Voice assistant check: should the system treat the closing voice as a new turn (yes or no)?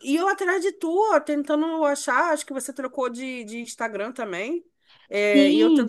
no